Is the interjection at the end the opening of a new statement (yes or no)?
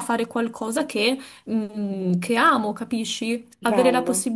no